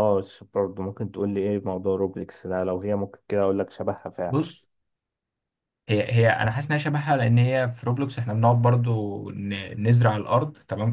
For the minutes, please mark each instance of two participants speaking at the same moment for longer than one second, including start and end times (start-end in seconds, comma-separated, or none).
none